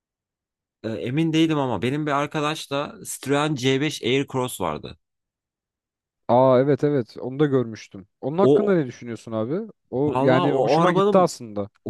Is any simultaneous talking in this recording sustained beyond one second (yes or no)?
yes